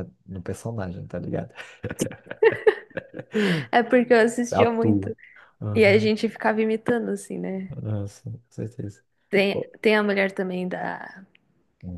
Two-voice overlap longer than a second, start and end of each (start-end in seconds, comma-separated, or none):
none